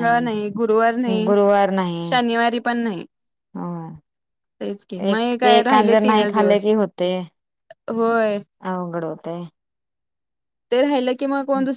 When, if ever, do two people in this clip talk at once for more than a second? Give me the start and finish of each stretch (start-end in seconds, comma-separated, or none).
5.1-6.7